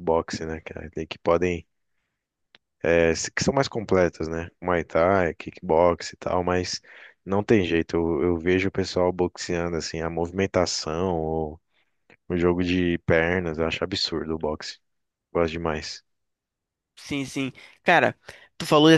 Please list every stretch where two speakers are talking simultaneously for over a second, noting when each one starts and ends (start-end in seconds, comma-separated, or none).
none